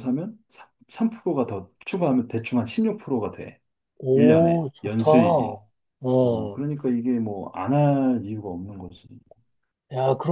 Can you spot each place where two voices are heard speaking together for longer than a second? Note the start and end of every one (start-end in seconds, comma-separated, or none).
4.1-5.6